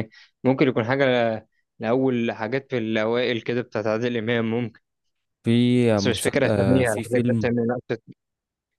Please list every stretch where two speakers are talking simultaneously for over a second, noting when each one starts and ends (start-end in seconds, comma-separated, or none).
6.0-7.5